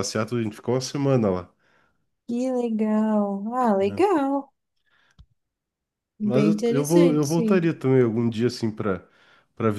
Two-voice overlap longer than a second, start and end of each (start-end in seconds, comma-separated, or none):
6.2-7.7